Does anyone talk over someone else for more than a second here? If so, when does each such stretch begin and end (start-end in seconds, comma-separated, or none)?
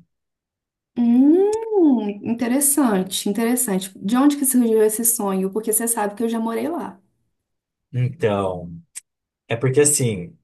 none